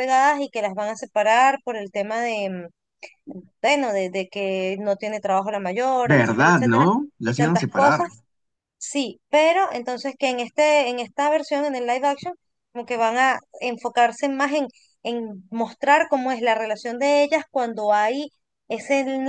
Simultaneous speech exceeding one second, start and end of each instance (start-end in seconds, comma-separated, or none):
6.0-8.0